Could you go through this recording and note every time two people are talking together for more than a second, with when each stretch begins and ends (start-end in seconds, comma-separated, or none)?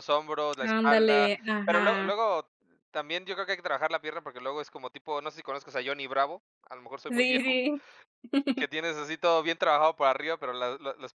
0.6-2.2